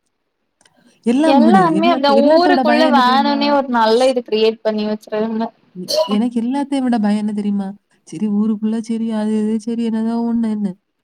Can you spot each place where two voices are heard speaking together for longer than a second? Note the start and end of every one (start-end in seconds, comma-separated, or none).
1.4-3.4